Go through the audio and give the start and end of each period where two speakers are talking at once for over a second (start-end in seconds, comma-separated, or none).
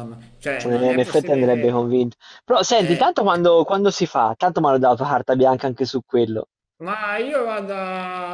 0.6-1.8